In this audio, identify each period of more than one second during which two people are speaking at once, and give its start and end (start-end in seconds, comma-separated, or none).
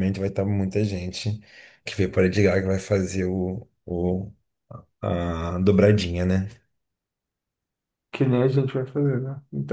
none